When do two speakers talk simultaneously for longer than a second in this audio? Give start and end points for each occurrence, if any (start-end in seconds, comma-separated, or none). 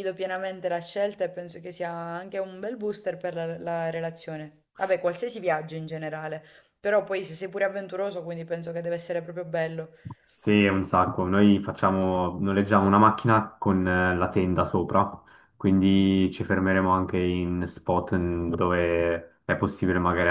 none